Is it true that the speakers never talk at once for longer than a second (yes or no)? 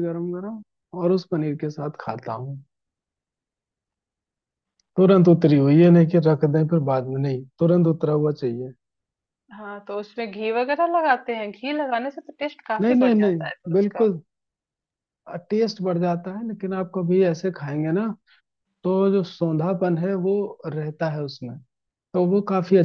no